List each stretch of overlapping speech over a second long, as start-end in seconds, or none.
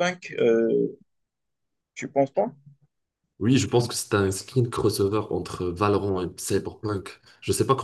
none